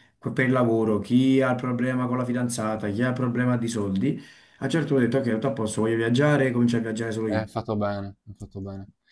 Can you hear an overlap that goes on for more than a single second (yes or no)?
no